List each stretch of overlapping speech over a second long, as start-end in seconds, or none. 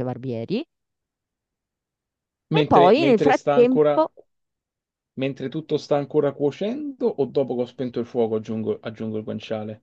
2.5-4.1